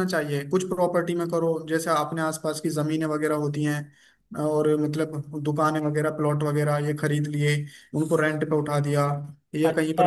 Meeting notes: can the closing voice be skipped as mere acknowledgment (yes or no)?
no